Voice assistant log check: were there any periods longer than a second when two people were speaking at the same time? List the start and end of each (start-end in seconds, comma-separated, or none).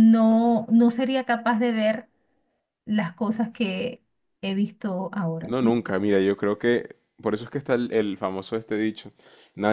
none